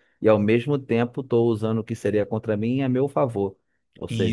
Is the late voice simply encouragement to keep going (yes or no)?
yes